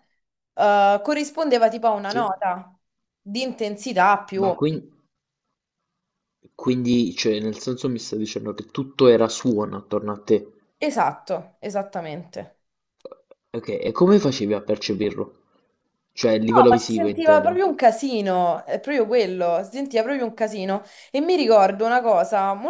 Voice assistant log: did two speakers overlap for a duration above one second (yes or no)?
yes